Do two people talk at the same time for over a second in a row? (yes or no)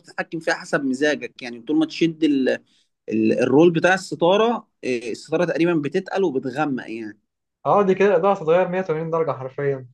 no